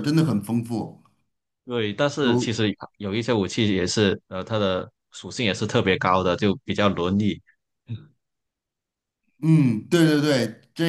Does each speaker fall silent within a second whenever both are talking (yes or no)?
yes